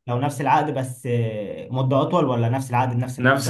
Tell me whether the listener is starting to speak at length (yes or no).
yes